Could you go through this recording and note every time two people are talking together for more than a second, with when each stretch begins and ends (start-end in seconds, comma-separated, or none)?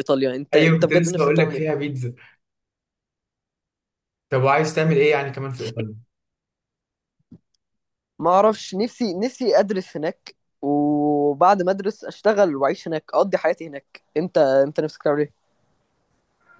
0.5-1.8